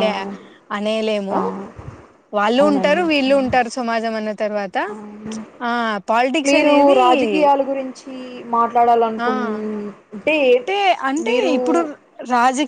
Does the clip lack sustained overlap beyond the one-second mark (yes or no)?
yes